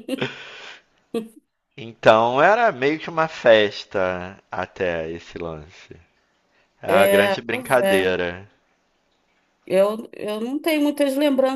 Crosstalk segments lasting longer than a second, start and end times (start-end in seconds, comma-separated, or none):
6.9-8.2